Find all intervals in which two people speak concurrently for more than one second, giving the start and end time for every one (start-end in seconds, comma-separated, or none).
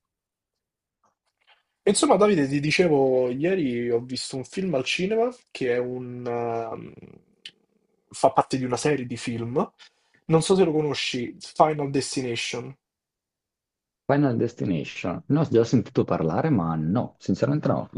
none